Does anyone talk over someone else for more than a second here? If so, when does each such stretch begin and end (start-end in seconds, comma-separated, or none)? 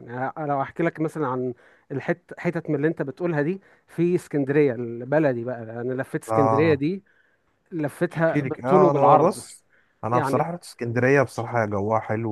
8.1-9.4